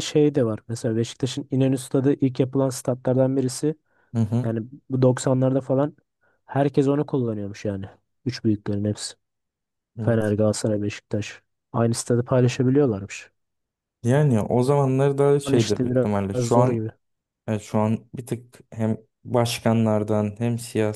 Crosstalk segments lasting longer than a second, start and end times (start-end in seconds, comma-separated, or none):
15.5-16.9